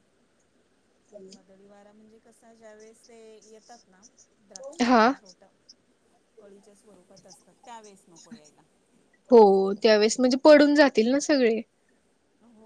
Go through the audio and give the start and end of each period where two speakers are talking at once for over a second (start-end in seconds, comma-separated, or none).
none